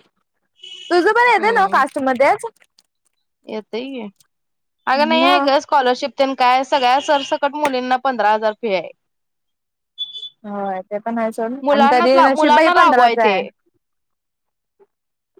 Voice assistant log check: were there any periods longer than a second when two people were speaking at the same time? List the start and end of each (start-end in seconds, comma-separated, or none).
11.7-13.2